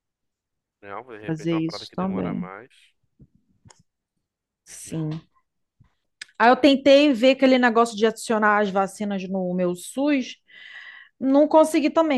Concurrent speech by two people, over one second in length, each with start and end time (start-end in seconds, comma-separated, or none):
1.2-2.5